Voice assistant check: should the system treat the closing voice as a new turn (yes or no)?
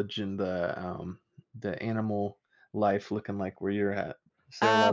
yes